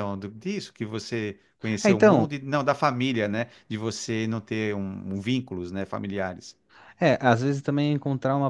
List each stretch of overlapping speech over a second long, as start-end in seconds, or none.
none